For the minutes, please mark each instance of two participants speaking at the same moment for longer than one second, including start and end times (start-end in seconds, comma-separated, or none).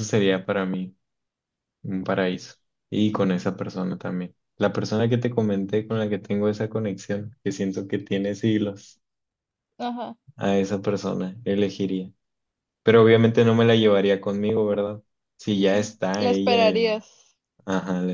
15.7-17.0